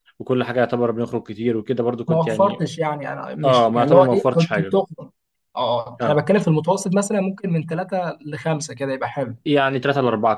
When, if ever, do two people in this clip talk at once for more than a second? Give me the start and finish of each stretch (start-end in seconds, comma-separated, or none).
3.4-4.8